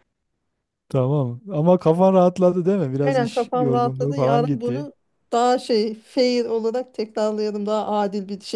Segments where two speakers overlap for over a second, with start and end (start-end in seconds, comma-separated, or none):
3.0-4.9